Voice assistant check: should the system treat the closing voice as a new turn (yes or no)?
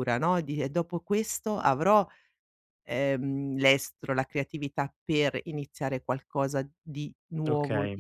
no